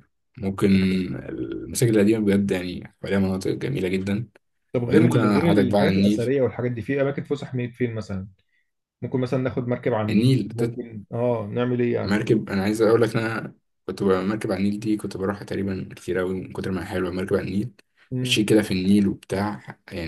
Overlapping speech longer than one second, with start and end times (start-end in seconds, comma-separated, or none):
4.8-6.3